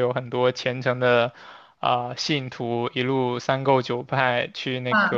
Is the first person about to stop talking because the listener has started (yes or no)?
no